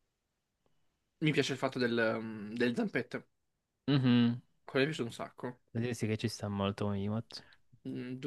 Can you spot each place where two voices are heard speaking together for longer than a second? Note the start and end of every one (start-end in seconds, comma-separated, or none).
none